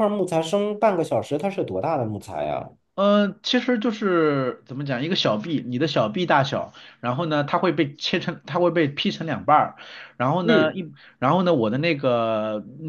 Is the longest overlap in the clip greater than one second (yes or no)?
no